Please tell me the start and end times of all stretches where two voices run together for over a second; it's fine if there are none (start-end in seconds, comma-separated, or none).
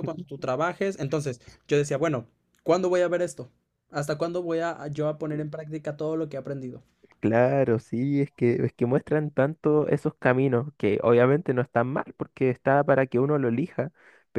none